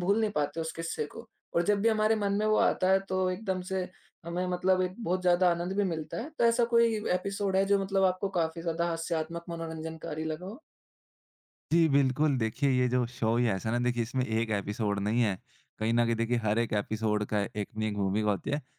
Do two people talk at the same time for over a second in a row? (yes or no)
no